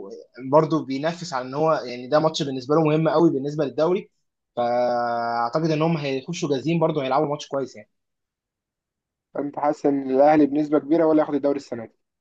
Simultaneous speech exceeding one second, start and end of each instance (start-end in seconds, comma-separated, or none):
none